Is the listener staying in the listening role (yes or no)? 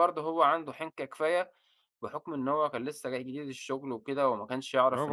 no